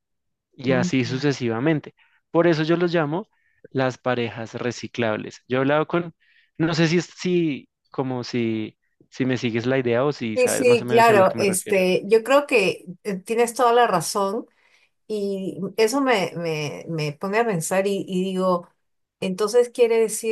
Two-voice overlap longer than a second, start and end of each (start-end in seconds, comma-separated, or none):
10.3-11.8